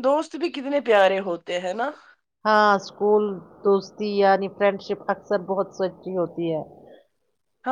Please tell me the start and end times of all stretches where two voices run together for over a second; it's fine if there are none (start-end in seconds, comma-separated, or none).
none